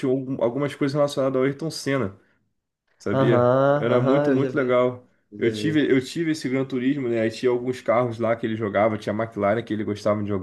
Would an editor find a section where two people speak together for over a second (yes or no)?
yes